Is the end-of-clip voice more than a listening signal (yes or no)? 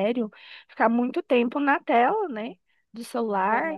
no